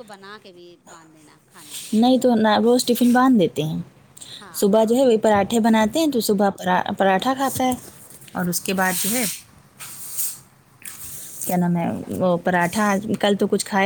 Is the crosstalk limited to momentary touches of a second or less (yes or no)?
yes